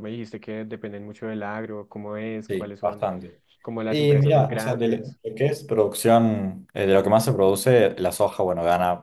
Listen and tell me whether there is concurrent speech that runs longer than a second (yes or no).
yes